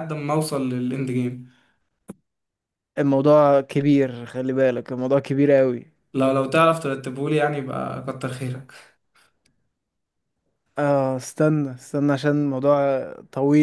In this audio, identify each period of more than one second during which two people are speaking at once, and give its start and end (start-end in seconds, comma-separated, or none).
none